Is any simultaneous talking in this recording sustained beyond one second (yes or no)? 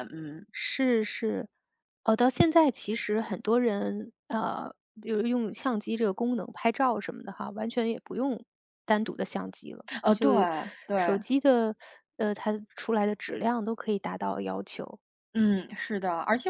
no